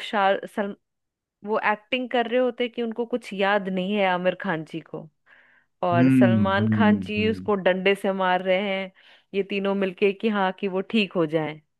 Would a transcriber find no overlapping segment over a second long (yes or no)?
no